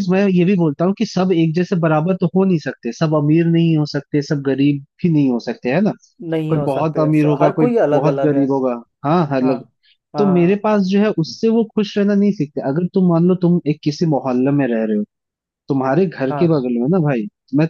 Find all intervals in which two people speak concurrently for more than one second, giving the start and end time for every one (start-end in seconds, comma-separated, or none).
6.5-8.4